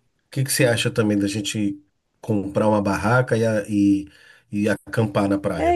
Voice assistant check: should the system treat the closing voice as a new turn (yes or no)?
yes